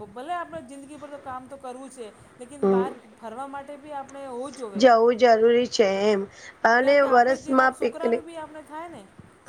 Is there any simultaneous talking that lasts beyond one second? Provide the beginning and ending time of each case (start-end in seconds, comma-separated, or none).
6.8-8.2